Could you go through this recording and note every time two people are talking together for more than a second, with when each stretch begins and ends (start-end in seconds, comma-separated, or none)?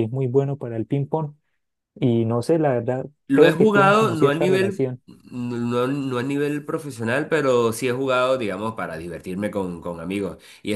3.3-4.9